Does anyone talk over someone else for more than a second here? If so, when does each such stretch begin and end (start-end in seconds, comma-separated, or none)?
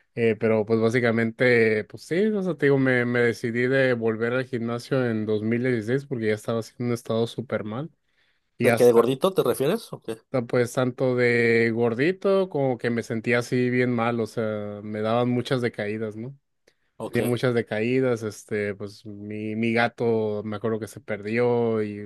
none